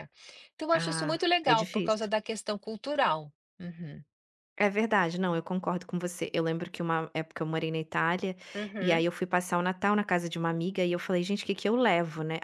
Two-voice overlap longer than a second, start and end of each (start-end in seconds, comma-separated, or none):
0.7-2.1